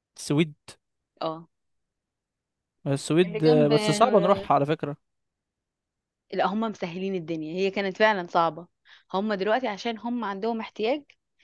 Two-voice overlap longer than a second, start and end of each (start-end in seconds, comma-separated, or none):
3.2-4.5